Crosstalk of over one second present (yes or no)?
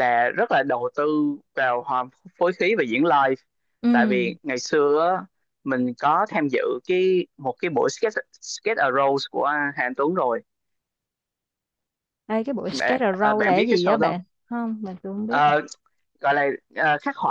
yes